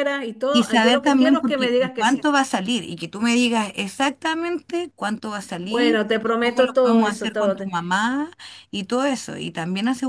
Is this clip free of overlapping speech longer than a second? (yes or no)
no